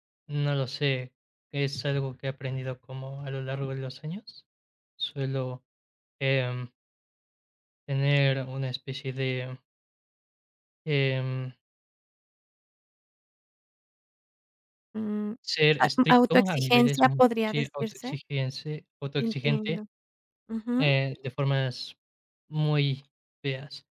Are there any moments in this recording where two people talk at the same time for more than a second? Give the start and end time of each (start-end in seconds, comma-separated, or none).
15.8-18.2